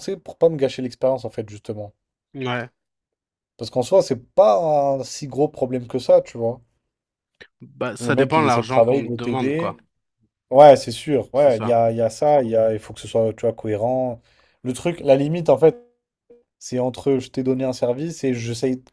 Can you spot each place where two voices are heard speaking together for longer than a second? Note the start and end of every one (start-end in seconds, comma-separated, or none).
8.0-9.8